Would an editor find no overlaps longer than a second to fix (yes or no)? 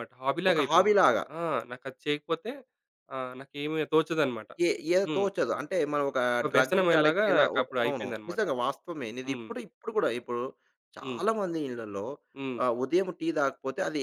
no